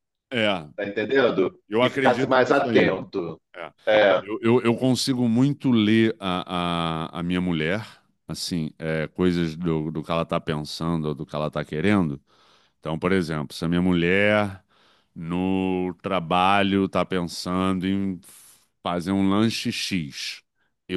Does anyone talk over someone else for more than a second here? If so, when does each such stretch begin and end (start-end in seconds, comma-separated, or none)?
1.7-2.9